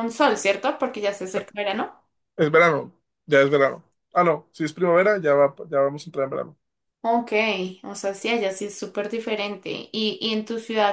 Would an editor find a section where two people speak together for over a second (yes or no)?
no